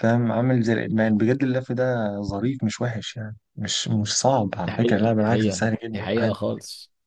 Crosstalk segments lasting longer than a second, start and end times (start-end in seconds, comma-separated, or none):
4.7-6.3